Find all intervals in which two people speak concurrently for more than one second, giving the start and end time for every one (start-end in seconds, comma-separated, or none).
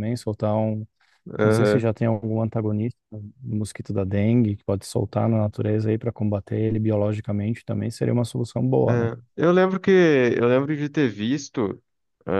none